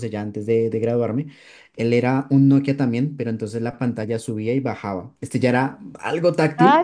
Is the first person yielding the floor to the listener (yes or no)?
yes